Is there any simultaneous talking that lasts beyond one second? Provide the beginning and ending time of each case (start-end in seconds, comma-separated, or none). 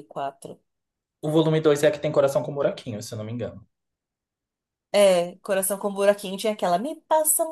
none